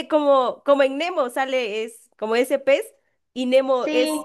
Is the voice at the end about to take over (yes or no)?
no